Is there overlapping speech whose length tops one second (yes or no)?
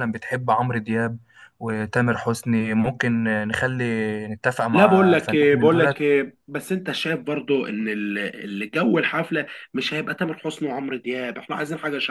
yes